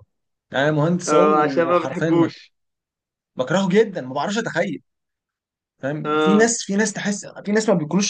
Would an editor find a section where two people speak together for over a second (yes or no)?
yes